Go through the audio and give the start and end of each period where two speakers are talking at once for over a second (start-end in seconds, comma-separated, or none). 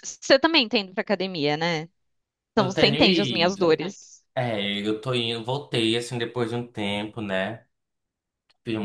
2.5-3.8